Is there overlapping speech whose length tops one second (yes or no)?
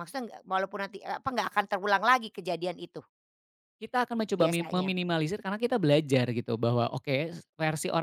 no